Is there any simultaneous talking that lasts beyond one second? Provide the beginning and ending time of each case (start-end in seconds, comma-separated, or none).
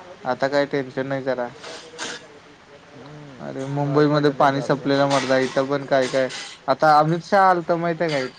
3.5-4.9